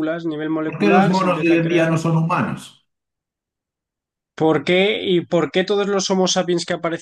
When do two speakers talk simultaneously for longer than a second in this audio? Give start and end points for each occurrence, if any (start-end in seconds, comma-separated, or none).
0.7-1.9